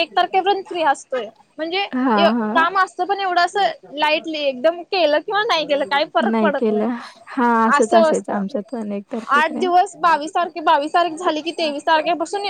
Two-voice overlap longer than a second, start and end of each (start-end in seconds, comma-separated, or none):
7.8-9.7